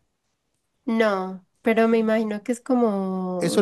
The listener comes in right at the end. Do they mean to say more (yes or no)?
yes